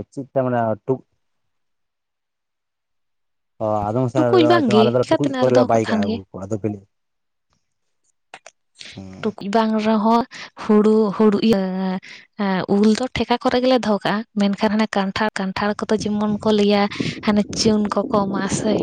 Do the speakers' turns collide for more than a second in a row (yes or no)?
yes